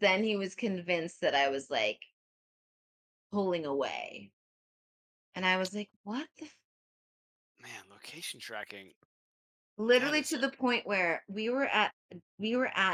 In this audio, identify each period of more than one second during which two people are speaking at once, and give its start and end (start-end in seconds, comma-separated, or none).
none